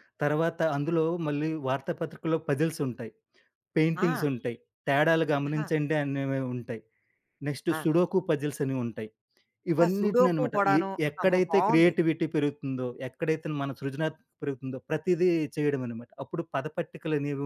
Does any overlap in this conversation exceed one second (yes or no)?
yes